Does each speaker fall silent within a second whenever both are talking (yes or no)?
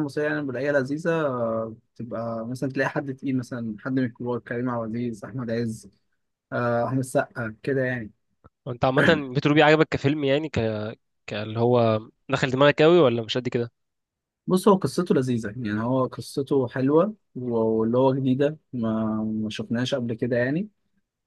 yes